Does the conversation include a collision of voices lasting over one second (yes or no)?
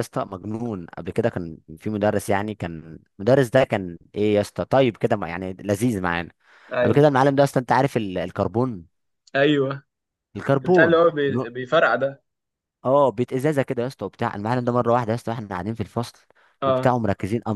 no